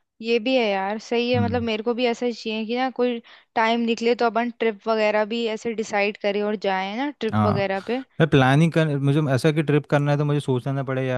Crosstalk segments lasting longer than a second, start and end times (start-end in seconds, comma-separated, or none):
none